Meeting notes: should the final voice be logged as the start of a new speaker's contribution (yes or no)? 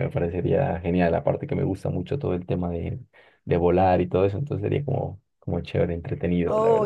yes